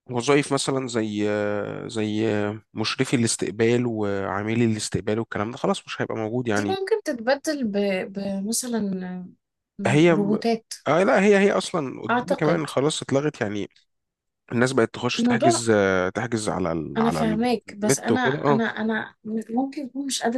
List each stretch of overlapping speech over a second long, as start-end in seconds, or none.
17.0-18.6